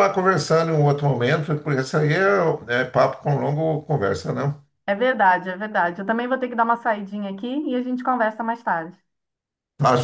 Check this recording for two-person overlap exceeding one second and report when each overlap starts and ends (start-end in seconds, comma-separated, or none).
none